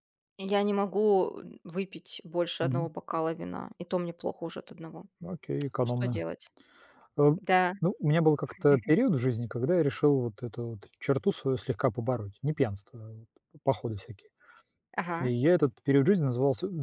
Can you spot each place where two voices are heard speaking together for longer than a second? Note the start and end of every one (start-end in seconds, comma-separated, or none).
none